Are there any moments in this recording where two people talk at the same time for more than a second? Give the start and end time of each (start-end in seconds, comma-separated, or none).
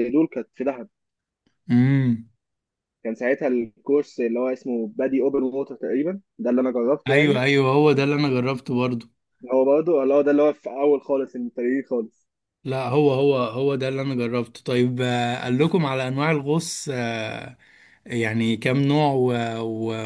none